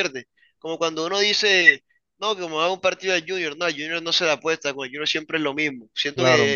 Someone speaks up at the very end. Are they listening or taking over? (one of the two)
listening